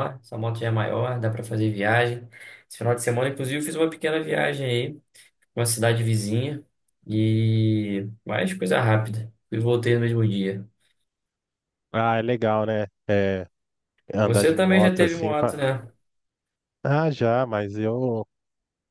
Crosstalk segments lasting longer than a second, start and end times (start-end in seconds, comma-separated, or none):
14.2-15.6